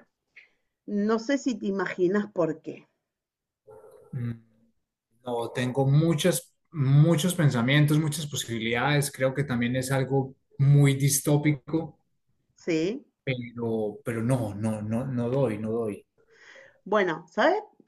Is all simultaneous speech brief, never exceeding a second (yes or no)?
yes